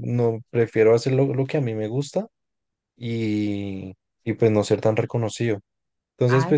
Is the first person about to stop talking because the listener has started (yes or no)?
no